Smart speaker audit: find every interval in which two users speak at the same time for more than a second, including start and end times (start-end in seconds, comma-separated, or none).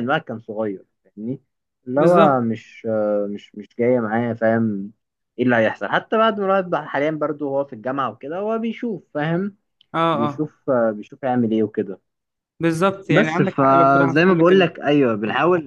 13.1-14.7